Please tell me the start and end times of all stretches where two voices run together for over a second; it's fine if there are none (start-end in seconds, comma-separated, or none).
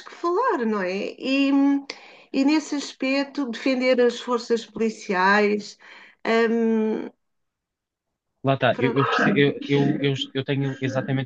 none